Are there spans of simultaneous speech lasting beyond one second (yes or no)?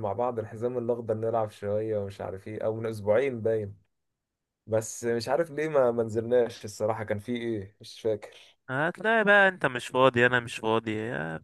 no